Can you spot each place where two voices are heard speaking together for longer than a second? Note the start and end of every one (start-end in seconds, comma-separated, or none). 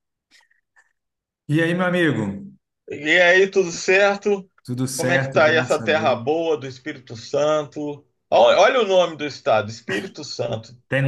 5.0-6.2